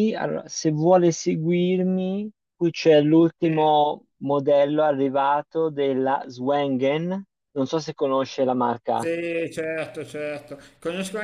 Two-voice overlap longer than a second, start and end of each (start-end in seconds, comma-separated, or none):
none